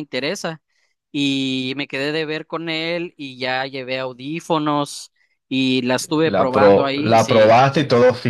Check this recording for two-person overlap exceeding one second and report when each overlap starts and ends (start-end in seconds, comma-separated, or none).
6.2-7.6